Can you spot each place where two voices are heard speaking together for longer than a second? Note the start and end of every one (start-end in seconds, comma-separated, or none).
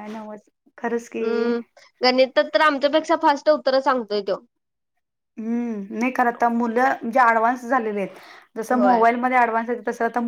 none